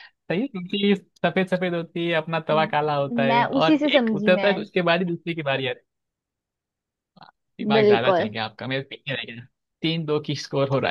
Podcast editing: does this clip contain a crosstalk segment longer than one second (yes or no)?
yes